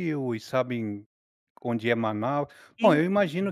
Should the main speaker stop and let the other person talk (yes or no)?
no